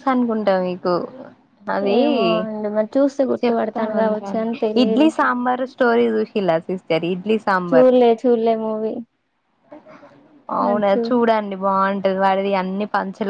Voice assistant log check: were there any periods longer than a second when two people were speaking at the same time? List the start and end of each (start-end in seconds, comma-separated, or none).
3.4-5.0